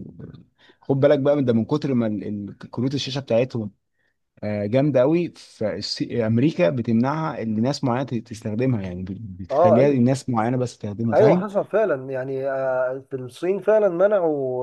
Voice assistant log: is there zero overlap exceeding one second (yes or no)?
yes